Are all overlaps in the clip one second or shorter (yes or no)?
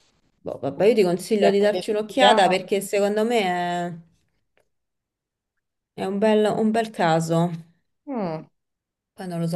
no